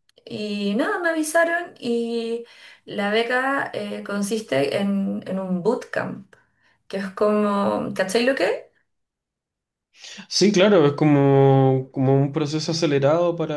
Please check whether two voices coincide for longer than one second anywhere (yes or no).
no